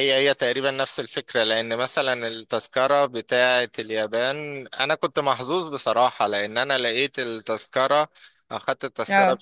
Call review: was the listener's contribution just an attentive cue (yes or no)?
yes